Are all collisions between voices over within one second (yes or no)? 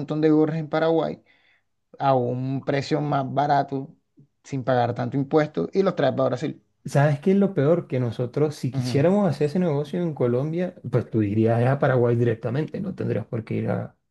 yes